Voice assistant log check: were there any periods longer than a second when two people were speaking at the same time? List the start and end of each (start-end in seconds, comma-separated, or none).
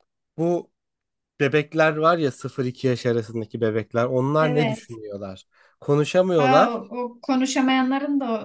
none